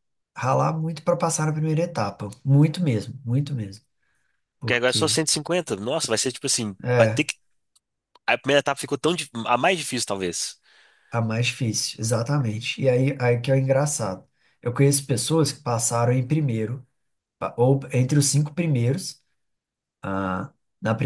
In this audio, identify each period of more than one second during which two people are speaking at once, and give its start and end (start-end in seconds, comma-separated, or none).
none